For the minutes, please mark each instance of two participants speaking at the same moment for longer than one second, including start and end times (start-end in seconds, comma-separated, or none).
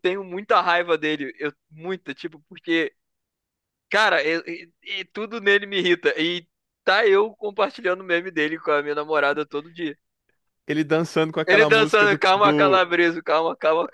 11.5-12.8